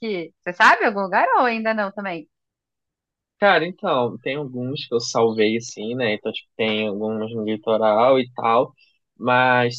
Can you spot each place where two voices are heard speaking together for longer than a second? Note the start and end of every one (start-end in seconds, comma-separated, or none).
none